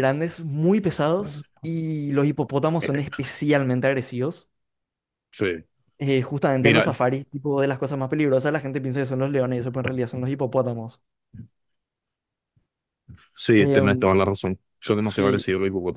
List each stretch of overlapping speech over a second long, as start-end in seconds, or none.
none